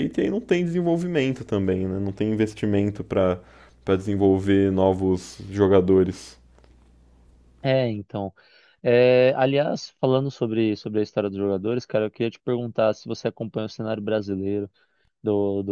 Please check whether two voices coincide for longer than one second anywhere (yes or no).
no